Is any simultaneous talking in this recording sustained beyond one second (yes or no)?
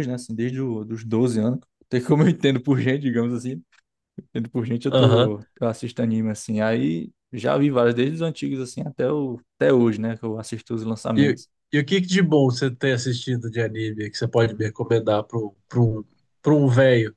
no